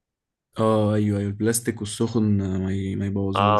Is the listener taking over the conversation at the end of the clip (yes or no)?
yes